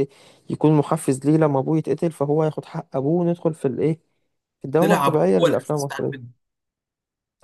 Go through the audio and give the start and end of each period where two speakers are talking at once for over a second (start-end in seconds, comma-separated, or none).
4.8-6.3